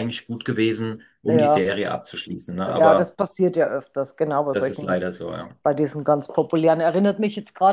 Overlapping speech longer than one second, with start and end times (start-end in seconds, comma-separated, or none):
none